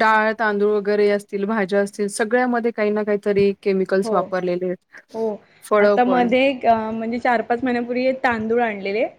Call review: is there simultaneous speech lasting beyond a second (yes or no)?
no